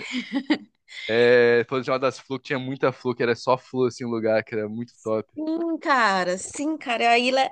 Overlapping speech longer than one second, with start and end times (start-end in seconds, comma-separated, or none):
none